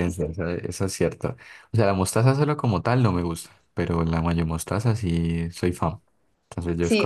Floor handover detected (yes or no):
yes